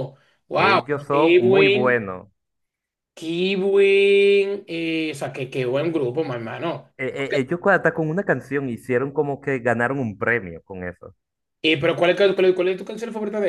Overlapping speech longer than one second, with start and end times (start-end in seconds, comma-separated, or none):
0.6-2.0